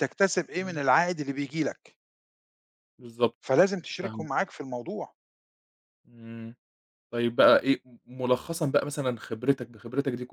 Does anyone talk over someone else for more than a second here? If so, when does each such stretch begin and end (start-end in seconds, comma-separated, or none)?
none